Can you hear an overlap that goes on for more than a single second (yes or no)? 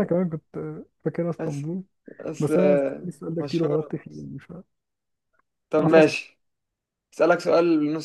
yes